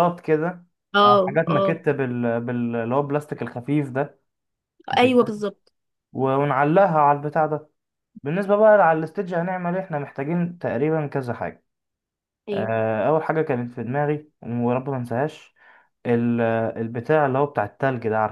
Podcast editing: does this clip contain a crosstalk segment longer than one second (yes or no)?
no